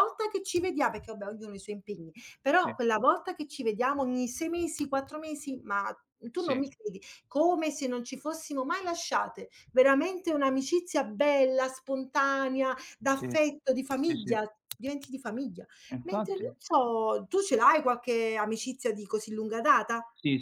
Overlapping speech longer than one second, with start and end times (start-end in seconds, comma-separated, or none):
none